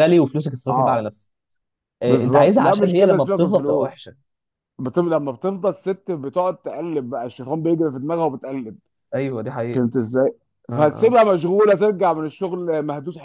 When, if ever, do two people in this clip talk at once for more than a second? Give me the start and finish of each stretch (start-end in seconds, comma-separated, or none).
2.0-4.1